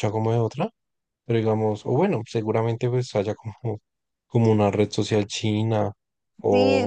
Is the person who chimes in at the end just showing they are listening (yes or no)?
no